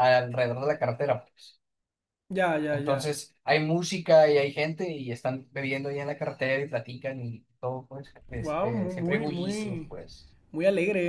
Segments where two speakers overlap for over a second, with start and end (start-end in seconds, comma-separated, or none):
8.3-9.9